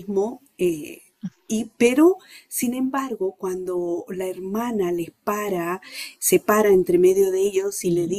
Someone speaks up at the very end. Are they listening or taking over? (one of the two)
listening